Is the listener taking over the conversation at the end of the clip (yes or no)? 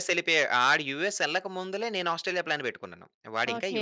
yes